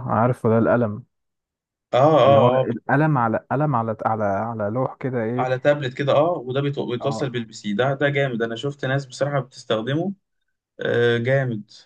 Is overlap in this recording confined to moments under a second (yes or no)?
yes